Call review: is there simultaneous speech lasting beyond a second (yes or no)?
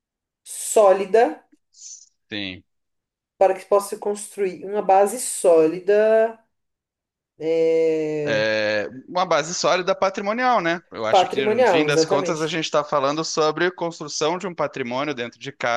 yes